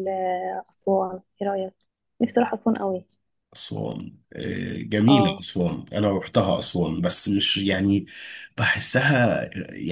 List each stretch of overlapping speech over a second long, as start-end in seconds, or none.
none